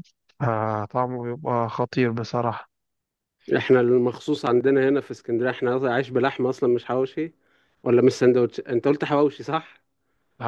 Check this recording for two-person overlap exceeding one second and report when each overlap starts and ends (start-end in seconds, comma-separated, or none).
none